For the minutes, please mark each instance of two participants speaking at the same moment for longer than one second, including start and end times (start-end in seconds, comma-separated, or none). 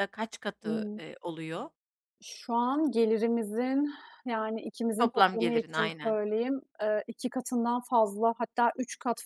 5.0-6.2